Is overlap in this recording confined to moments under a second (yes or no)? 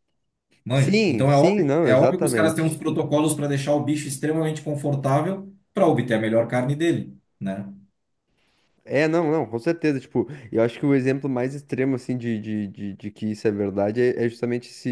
no